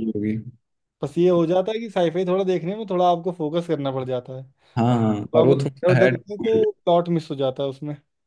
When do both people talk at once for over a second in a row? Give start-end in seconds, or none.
4.9-6.7